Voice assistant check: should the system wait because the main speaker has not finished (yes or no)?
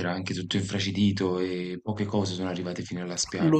no